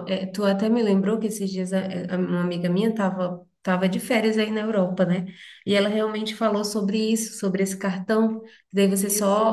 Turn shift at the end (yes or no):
no